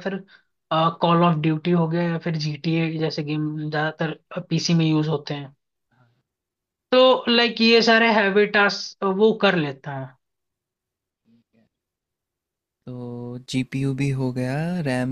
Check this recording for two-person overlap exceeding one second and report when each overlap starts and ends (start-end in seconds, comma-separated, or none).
none